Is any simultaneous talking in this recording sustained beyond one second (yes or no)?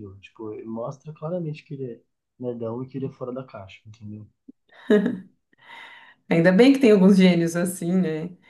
no